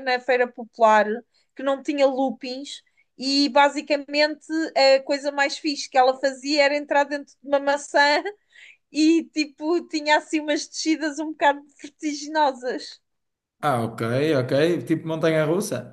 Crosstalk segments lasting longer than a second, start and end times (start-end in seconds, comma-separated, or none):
none